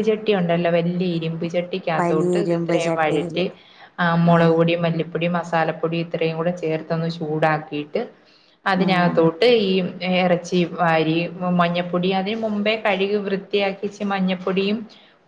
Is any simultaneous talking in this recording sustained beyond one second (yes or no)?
yes